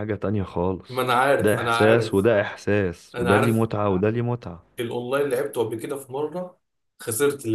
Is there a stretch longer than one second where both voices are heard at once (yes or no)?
yes